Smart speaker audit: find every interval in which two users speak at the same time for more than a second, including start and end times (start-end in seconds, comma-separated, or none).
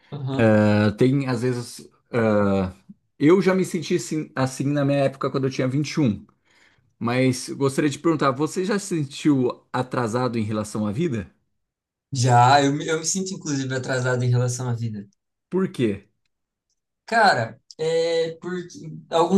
none